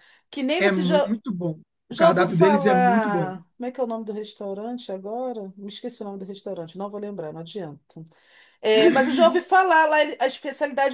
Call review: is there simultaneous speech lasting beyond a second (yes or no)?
yes